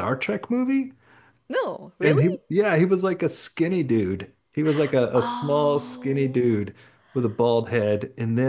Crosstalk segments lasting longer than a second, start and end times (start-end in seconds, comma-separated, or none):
5.2-6.5